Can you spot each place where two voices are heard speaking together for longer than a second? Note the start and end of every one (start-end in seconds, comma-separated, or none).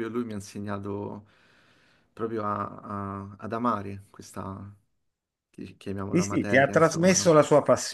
6.1-7.4